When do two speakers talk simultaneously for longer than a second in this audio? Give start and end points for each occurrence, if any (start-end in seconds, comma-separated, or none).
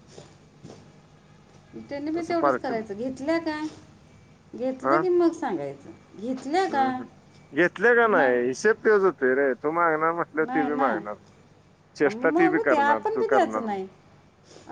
12.1-13.8